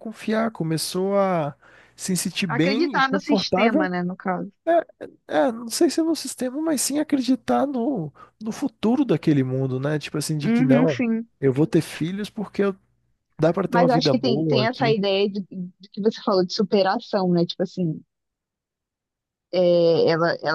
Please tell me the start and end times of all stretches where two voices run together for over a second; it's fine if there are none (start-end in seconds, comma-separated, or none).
2.5-3.9, 13.7-15.0